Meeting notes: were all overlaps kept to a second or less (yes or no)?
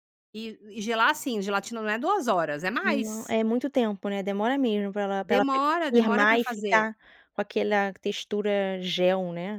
no